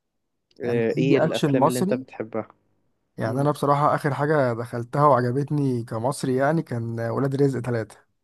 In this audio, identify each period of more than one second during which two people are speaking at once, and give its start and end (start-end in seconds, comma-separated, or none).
0.6-2.0